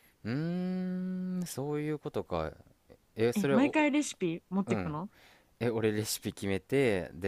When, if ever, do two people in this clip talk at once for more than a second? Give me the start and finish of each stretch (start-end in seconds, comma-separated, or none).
none